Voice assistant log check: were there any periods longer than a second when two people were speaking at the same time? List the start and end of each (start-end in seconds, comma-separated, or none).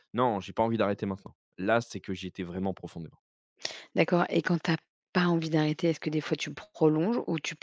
none